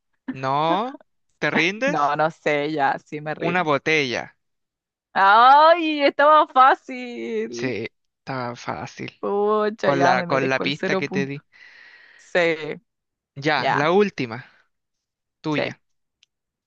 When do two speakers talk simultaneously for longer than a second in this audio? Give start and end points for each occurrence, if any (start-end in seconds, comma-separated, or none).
9.8-11.4